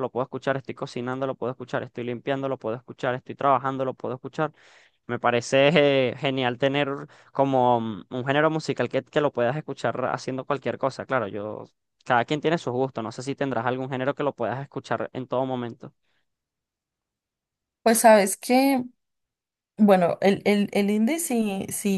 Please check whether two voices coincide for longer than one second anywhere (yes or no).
no